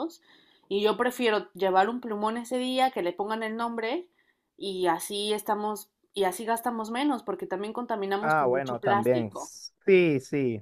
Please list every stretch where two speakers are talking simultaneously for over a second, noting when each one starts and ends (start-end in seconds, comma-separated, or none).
8.2-9.5